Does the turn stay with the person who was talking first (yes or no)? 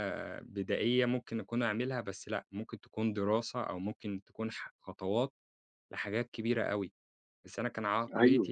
no